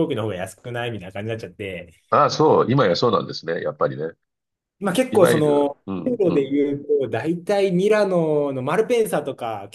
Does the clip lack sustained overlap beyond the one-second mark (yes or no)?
no